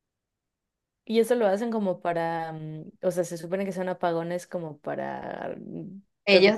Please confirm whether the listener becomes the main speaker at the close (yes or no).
yes